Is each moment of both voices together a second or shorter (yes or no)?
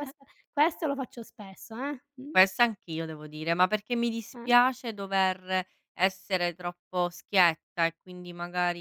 yes